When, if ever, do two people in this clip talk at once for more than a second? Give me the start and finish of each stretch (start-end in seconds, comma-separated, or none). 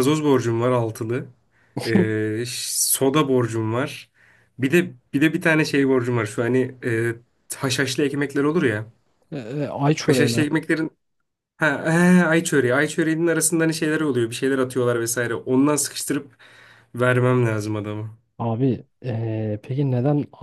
none